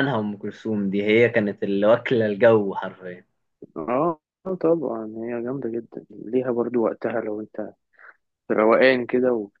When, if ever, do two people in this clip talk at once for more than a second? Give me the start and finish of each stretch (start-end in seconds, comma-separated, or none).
none